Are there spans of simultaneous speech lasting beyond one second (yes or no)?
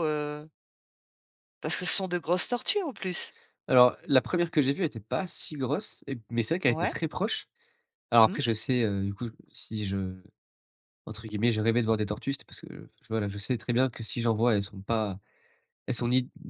no